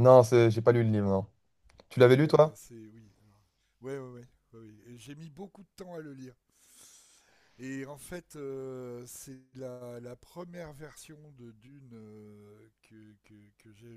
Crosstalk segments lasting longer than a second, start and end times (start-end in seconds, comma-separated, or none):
none